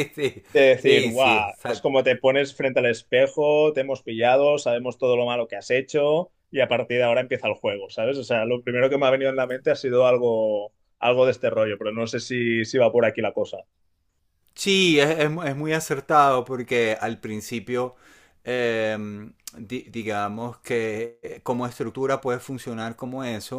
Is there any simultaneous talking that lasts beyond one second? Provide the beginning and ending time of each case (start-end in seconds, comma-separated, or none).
0.5-1.9